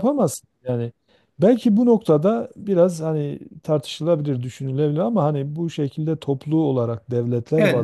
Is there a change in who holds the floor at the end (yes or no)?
yes